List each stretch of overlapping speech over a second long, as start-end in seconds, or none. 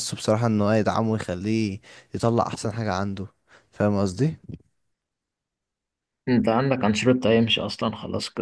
none